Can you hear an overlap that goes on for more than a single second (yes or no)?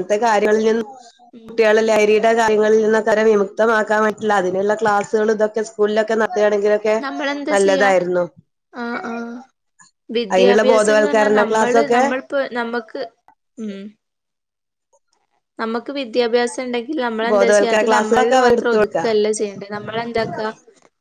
yes